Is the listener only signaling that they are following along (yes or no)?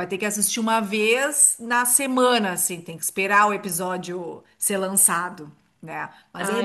no